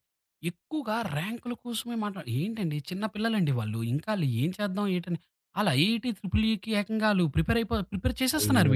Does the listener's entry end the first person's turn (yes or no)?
yes